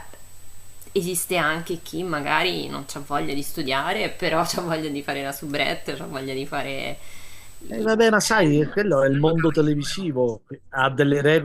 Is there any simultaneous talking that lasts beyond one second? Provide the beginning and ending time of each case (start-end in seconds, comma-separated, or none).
7.7-10.1